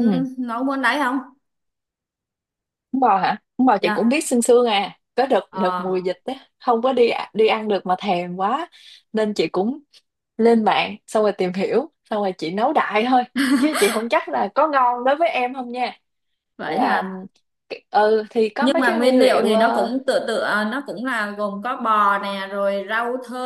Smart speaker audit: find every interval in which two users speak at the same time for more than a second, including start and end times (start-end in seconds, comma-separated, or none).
18.6-19.9